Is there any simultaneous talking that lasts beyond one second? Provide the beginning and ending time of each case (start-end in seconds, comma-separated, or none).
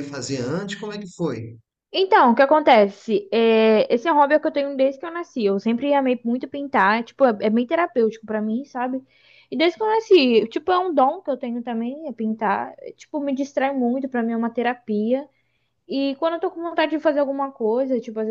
none